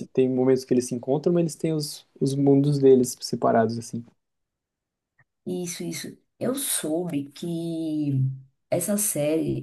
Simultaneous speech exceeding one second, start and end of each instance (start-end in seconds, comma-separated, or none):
none